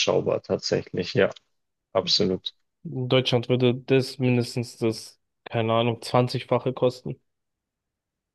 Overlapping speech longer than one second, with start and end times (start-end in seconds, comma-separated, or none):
none